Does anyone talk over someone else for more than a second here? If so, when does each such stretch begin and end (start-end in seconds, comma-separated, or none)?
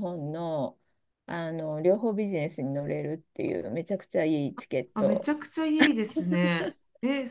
none